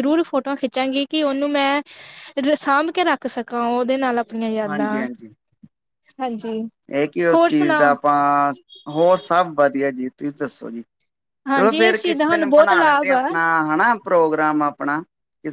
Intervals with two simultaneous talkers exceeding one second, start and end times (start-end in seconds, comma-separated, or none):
11.5-13.2